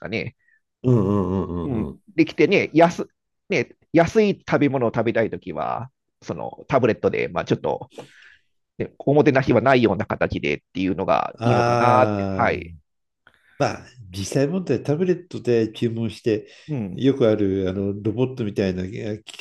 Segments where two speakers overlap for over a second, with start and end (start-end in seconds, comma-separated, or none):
11.4-12.7